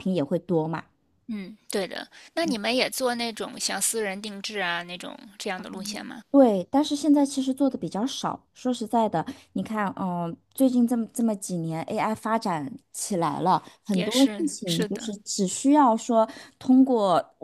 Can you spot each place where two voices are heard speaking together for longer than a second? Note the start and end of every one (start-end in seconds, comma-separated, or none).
13.9-15.1